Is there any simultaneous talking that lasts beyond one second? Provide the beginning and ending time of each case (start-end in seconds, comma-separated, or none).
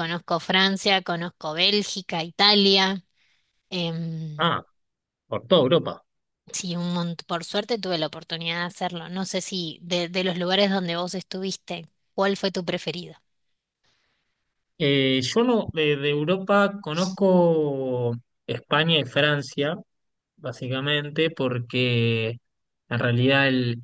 none